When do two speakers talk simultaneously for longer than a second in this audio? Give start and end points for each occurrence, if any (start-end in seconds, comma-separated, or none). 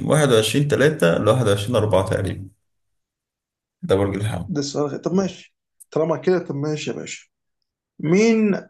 none